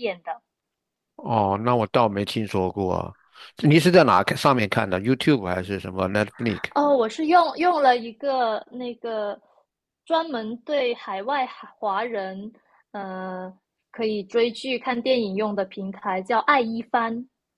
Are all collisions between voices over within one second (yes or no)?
yes